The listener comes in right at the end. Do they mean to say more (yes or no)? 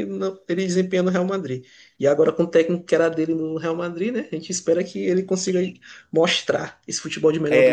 yes